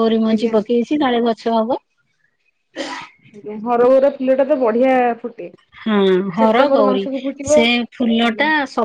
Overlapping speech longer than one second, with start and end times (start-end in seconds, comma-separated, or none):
none